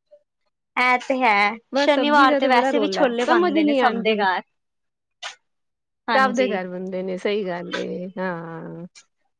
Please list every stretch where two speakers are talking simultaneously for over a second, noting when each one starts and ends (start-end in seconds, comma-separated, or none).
1.8-4.2